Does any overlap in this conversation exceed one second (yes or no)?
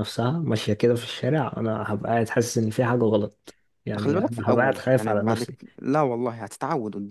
yes